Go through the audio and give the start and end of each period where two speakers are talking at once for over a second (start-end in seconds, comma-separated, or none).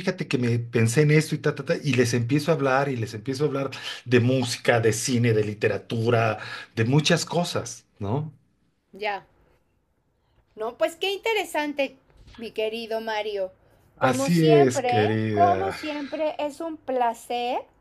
14.0-15.8